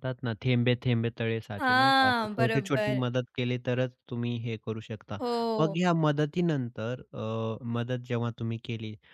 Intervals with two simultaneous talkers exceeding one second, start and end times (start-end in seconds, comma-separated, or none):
1.6-3.0